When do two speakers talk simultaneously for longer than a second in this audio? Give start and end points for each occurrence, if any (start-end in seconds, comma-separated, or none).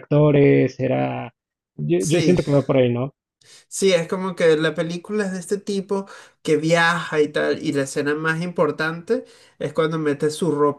none